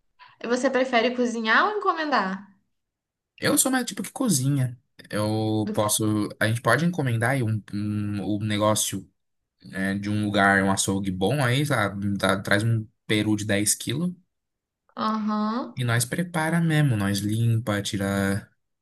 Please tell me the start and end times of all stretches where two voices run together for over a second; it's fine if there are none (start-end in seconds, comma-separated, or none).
none